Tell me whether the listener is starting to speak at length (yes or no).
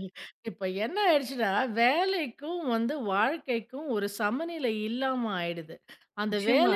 no